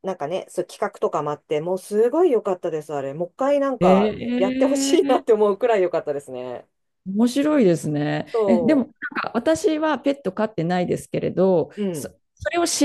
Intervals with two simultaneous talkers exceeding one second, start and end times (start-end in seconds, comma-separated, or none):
3.8-5.4